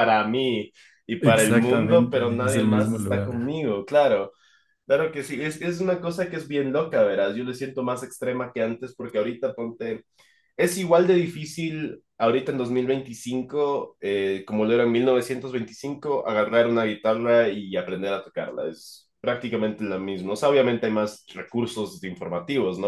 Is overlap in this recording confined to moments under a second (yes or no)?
no